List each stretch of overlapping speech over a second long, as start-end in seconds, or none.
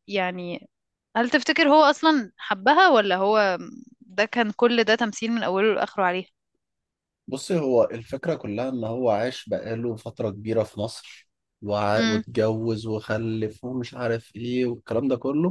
none